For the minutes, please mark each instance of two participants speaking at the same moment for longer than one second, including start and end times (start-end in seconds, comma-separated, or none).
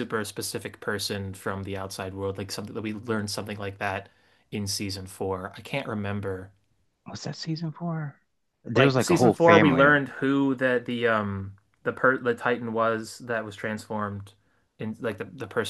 8.7-10.0